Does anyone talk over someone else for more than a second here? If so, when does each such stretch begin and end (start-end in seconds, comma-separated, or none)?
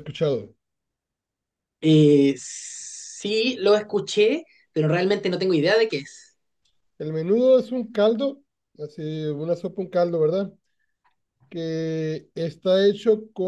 none